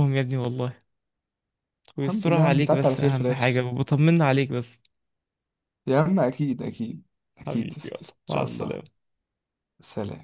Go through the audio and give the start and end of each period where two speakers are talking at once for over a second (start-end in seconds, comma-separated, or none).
2.0-3.5, 7.5-8.8